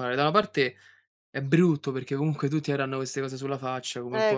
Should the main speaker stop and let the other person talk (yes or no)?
yes